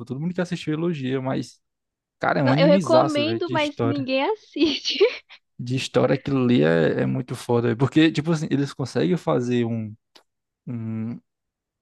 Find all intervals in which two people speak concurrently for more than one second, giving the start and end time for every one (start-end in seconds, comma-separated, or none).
2.4-4.1